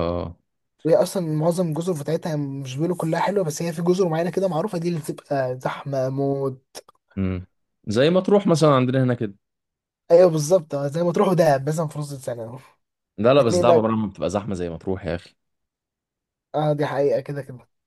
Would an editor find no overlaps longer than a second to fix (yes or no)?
yes